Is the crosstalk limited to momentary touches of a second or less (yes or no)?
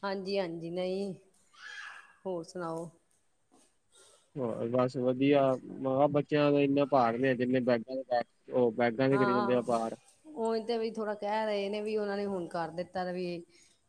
yes